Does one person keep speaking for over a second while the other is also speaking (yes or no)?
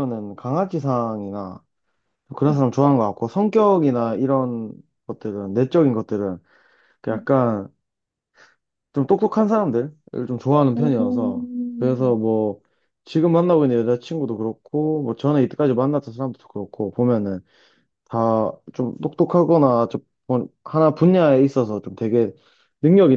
yes